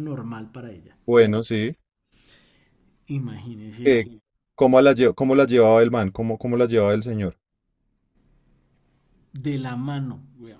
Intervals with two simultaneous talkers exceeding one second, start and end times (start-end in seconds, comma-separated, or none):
none